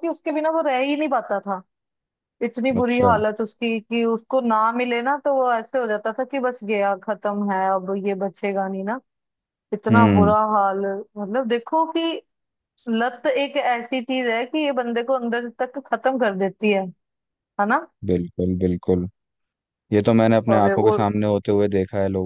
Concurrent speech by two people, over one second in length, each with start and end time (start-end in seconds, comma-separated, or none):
none